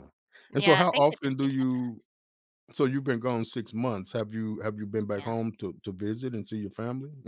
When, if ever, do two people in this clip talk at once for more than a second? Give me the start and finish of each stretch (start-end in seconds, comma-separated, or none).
0.5-1.9